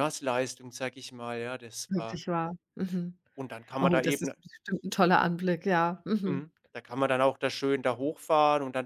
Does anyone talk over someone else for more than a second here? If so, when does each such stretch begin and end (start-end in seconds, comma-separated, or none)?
none